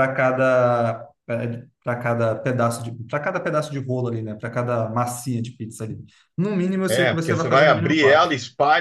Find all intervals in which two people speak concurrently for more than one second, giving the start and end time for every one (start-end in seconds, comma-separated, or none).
6.9-8.3